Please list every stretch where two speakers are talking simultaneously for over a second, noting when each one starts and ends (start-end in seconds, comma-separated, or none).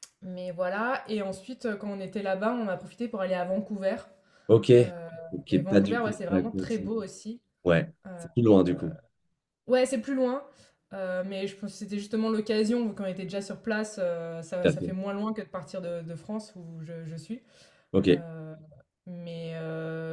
5.5-6.9